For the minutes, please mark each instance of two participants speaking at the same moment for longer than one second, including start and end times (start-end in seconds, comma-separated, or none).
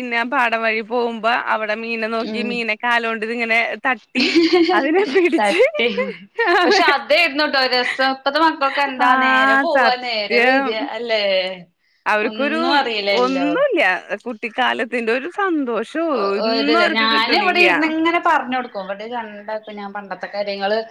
none